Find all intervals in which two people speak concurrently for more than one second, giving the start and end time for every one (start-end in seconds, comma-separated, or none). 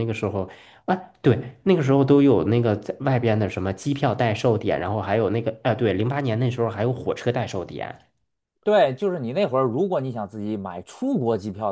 none